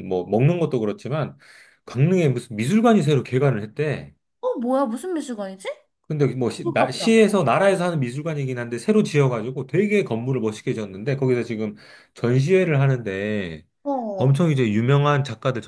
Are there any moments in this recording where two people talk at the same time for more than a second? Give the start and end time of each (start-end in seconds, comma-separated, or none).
none